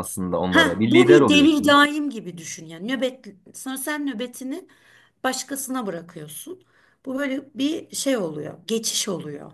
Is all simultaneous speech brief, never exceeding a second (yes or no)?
no